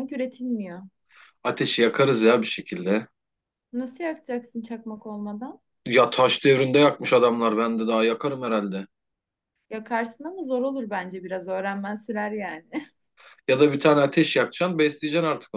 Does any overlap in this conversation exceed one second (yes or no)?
no